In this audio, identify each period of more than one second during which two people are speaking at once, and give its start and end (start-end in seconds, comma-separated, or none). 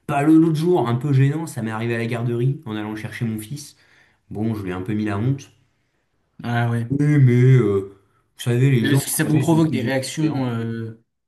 8.8-10.6